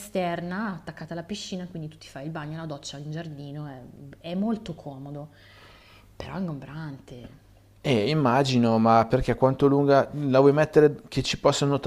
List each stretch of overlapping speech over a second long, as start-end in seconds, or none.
none